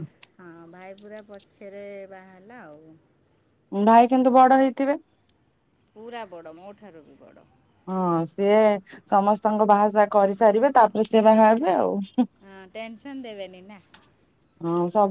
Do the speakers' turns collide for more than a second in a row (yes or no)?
no